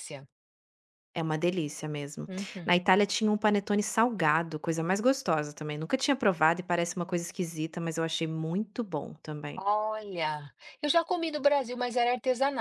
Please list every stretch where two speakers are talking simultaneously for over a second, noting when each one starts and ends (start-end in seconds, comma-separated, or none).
none